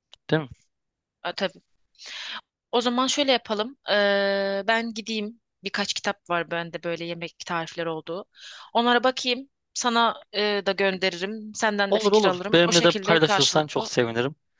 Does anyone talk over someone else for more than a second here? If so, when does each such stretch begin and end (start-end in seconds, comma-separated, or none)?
11.9-13.9